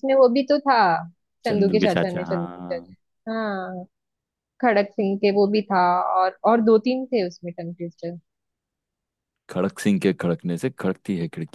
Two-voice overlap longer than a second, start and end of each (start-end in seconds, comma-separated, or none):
1.4-2.9